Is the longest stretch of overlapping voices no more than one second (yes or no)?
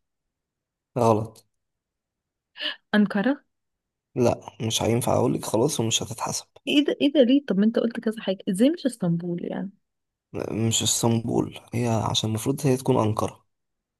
yes